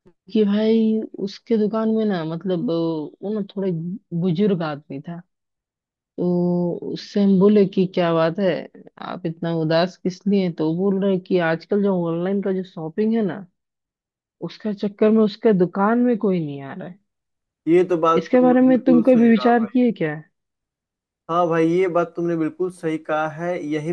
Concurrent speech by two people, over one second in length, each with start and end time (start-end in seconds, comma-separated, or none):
18.2-19.8